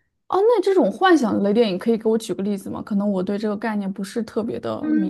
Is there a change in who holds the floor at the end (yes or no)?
yes